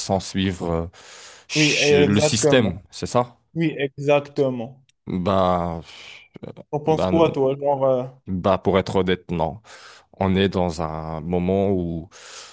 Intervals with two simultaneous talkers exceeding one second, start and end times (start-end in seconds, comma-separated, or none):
1.5-2.8